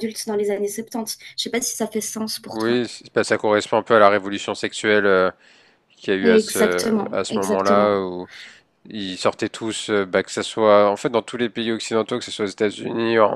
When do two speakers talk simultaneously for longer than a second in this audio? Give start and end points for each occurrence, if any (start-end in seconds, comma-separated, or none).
6.2-8.0